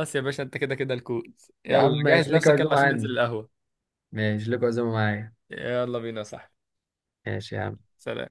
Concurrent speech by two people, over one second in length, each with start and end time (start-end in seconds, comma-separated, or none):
1.7-3.1